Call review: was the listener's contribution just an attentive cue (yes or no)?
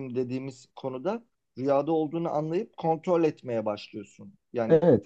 no